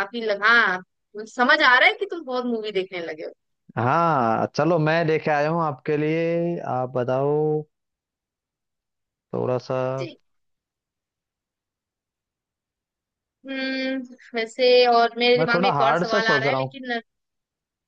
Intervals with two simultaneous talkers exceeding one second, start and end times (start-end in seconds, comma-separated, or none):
15.4-16.8